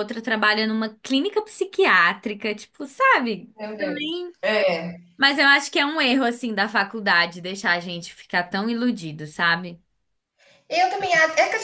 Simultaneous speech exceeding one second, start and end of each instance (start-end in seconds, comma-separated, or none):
none